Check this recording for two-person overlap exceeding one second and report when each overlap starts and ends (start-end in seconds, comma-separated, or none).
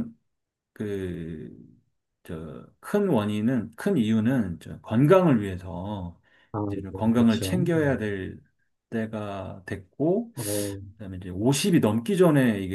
6.6-8.2